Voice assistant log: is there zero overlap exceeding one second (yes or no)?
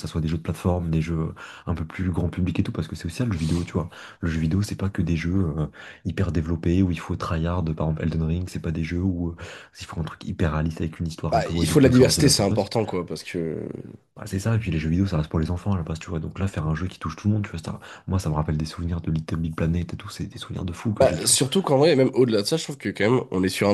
no